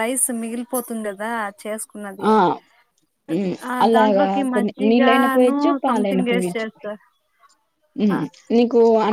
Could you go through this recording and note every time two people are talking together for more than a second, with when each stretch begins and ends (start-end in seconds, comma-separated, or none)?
3.7-6.7